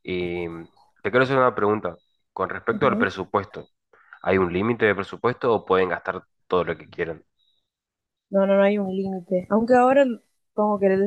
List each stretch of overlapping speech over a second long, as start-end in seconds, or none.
none